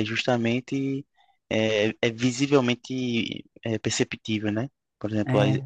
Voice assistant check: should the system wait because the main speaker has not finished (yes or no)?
yes